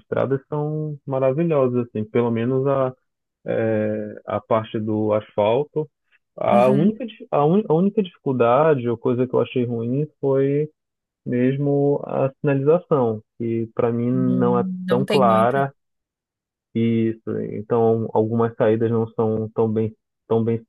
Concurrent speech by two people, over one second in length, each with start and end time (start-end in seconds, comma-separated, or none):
14.1-15.7